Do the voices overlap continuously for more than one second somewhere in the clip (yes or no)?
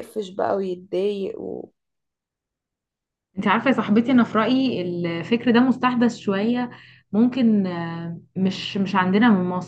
no